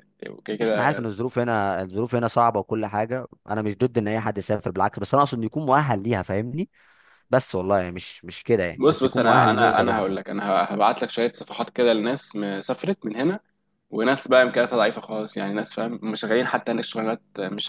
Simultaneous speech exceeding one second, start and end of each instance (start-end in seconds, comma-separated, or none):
8.7-10.4